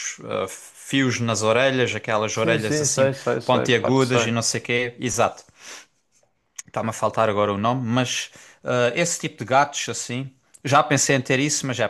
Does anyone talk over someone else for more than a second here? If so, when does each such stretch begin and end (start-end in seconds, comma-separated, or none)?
2.3-4.3